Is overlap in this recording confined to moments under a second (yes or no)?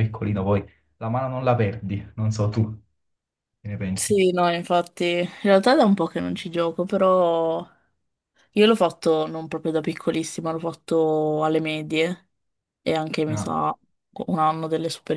yes